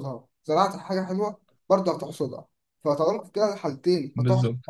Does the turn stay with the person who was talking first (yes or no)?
yes